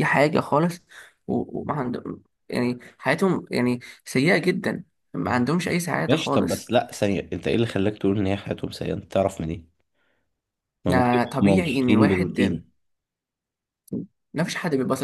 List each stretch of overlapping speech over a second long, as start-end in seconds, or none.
10.9-12.6